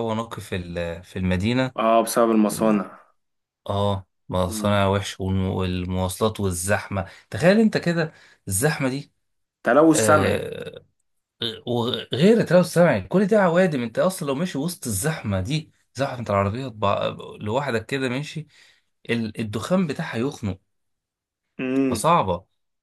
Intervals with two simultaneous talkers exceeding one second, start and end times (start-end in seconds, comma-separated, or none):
none